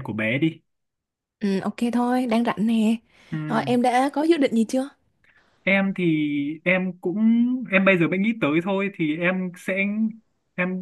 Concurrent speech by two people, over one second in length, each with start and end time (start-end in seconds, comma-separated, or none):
none